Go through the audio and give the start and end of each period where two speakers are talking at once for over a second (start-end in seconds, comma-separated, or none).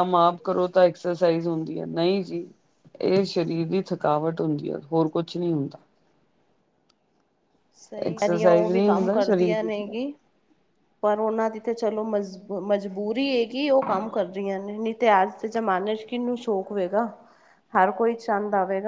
8.1-9.9